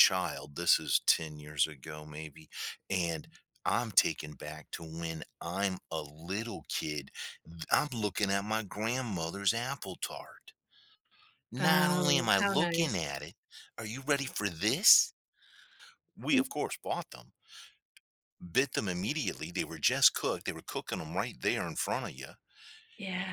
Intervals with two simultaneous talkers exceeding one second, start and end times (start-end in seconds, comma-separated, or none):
11.6-13.1